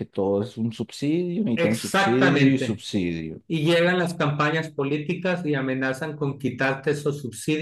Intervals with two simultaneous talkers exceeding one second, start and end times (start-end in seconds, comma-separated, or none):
1.5-2.8